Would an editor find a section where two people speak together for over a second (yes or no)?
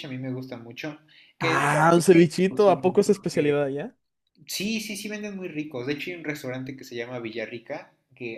yes